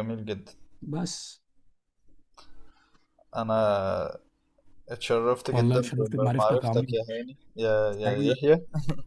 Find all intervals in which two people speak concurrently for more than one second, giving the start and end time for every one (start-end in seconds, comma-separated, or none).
5.5-6.9